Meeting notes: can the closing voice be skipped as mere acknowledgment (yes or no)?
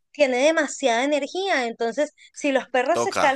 yes